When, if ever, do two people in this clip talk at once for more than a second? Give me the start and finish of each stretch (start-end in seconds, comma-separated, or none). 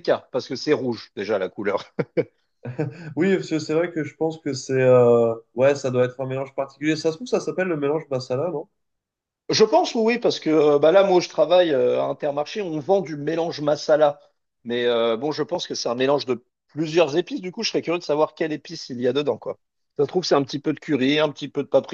none